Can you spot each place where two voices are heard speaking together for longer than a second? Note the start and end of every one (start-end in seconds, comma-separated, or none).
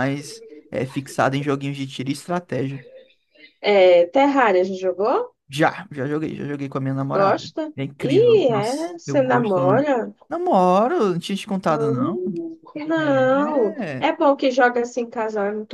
7.1-9.9